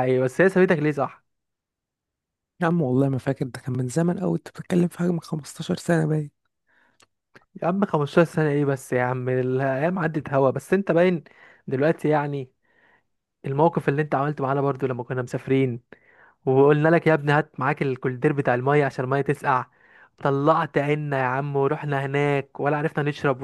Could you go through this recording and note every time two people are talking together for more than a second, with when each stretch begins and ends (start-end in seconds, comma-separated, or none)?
none